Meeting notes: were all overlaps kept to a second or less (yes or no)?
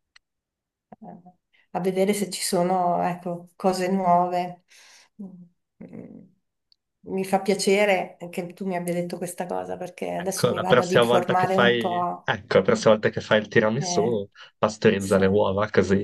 no